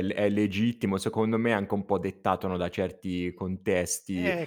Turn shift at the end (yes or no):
no